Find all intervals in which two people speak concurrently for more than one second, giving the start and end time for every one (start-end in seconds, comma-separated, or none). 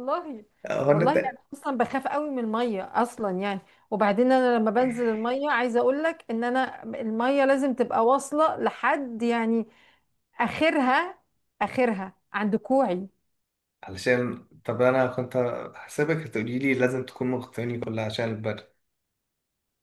none